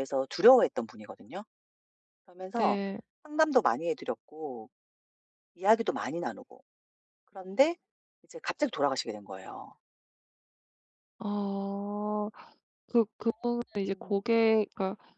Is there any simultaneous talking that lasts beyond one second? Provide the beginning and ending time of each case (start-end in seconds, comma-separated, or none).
none